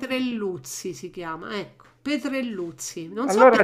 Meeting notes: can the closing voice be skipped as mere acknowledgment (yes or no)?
yes